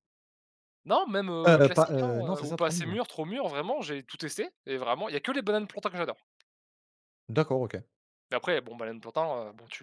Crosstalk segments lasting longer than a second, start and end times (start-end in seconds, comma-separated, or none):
1.4-3.0